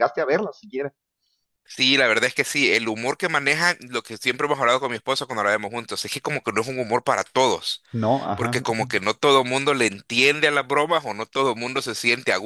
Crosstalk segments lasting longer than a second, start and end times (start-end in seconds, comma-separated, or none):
none